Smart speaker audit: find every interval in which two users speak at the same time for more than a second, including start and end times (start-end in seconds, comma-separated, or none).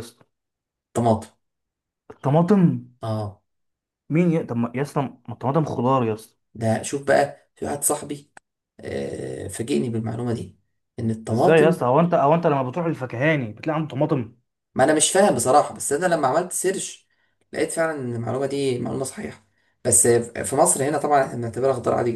none